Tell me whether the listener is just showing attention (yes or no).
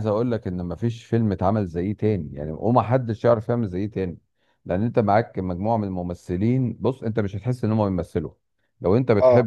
yes